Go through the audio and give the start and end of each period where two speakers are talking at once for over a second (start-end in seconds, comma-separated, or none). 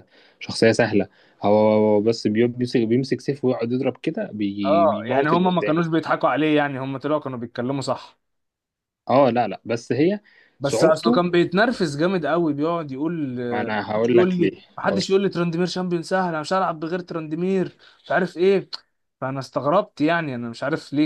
4.7-6.0